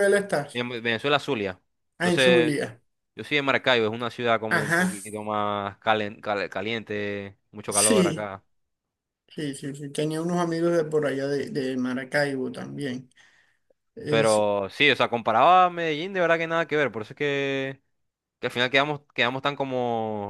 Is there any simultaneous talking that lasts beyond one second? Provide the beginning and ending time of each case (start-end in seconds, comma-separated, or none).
none